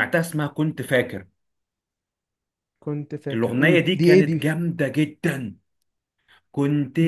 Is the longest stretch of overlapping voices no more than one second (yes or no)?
no